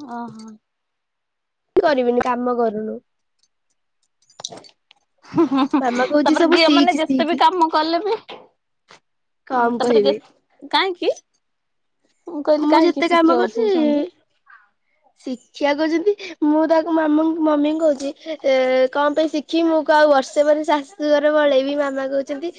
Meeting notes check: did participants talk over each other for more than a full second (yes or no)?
yes